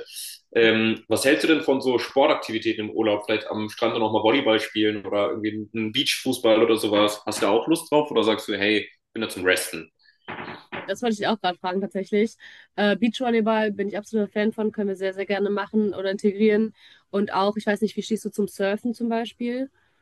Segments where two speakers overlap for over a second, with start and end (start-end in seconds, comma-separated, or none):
none